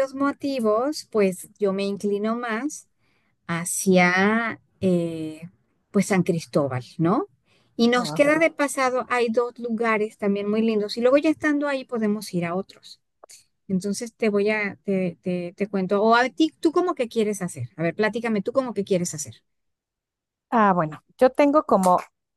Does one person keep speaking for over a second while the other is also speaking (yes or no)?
no